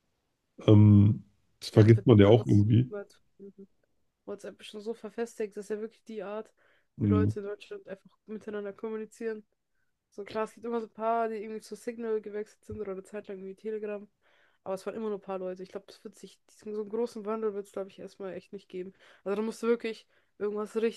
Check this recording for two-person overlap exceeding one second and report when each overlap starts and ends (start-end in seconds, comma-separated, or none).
1.6-2.9